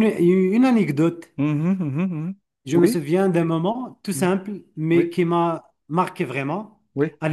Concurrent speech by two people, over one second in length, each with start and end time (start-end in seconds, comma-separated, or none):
none